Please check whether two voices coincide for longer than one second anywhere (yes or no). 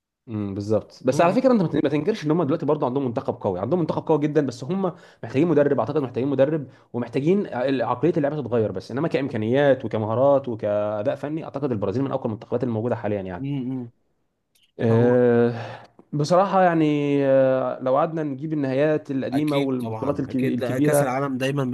yes